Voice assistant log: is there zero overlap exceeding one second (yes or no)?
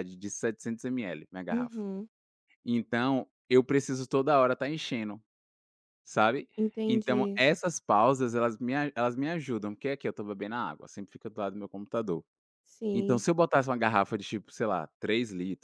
yes